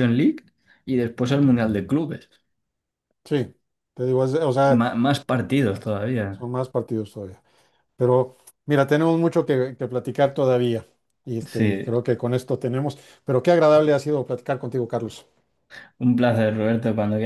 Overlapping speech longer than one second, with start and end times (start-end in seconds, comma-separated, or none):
none